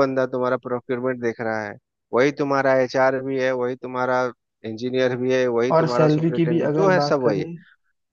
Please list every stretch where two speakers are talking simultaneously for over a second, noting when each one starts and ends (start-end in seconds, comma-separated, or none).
5.8-7.5